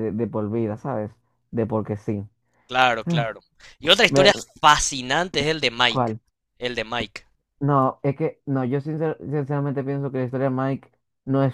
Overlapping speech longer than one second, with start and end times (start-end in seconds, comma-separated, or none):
none